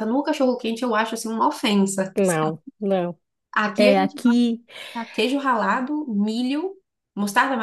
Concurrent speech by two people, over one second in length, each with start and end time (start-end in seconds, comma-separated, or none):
none